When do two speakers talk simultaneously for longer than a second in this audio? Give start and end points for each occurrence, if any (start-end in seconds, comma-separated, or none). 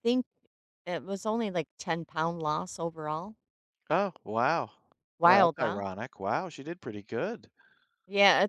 none